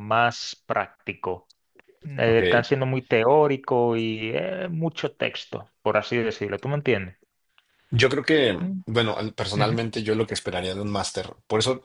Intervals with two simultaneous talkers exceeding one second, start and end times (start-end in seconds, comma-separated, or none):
none